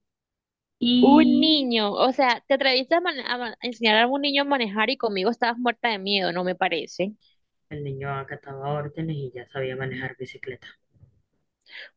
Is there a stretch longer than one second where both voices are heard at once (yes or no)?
no